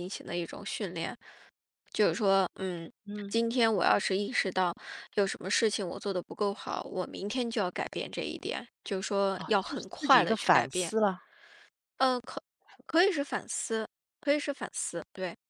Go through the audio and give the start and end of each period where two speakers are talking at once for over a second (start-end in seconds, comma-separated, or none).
9.3-10.9